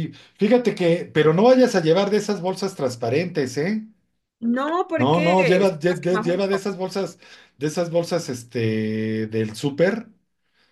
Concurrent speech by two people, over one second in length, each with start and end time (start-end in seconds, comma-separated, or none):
5.0-6.7